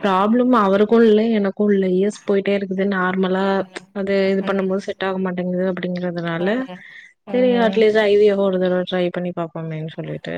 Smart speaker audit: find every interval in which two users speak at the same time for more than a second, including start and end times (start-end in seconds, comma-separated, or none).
none